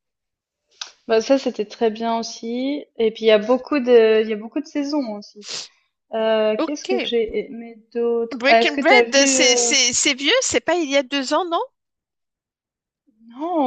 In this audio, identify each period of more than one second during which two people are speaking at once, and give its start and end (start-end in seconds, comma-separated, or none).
8.3-9.8